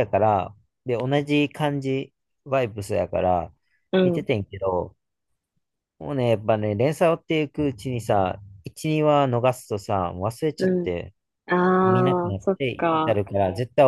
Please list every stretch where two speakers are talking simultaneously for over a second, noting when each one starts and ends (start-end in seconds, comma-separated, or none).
11.8-13.2